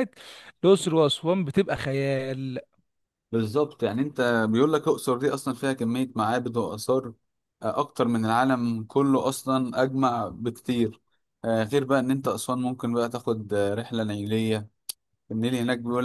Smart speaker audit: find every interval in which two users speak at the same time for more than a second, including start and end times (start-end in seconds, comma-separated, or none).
none